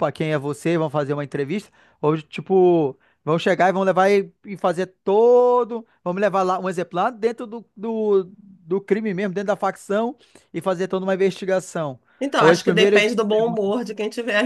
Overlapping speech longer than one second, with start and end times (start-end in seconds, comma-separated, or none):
12.4-13.7